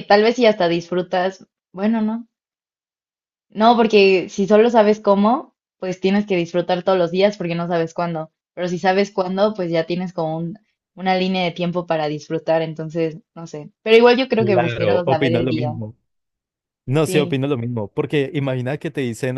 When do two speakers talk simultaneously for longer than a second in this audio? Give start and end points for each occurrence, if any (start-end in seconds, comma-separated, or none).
14.4-15.7